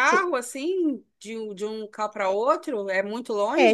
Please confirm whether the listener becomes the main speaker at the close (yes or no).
yes